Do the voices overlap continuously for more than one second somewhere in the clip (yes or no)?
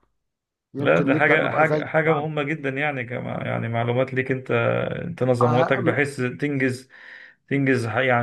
yes